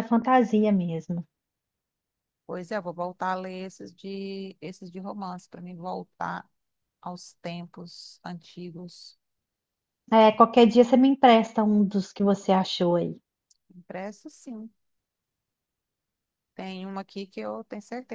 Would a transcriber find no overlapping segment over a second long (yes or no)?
yes